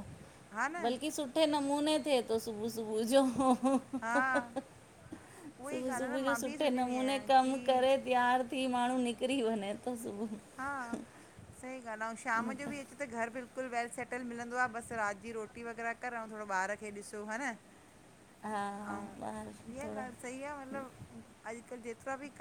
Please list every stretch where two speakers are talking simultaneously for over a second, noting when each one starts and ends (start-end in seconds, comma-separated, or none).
5.7-7.9